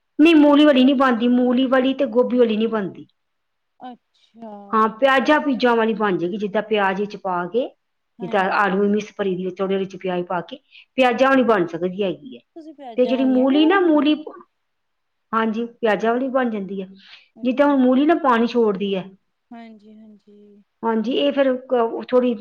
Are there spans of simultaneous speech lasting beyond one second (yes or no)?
yes